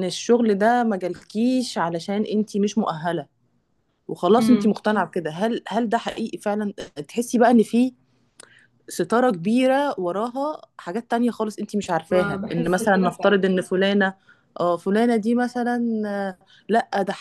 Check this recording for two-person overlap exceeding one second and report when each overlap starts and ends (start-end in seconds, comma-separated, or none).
12.1-13.4